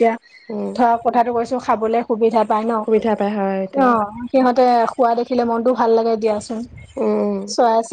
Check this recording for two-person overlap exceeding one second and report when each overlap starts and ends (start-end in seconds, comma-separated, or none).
none